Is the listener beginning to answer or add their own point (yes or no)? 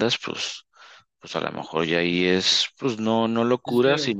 no